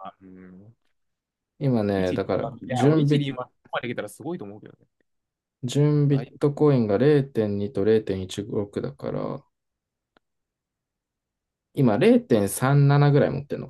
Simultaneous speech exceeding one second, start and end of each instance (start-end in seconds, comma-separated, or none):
1.9-3.3